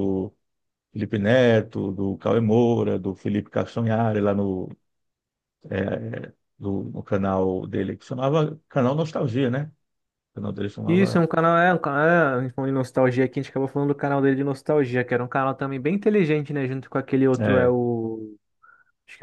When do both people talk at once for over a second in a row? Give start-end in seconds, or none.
none